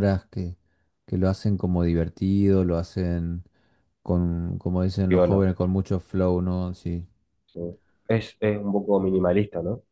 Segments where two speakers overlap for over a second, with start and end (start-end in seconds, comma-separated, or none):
none